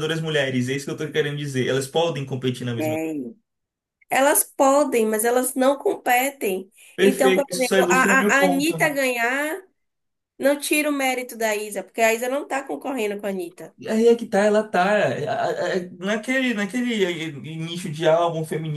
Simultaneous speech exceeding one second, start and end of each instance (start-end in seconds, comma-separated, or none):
7.0-8.7